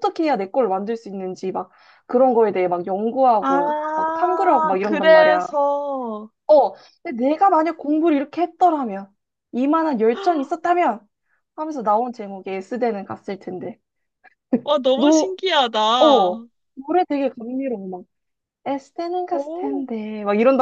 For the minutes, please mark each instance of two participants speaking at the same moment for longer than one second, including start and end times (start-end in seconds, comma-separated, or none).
3.4-5.5